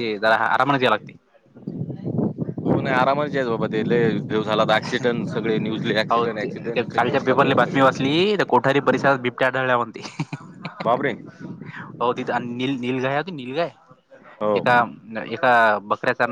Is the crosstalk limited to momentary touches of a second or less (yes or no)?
no